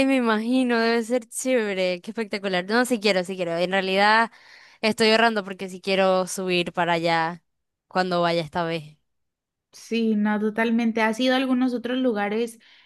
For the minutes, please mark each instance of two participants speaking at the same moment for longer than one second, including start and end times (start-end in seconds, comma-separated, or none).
none